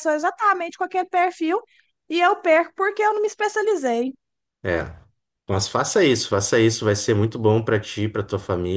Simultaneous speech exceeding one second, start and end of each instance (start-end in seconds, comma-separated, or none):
none